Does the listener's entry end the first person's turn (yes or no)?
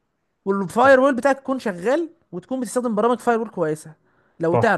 yes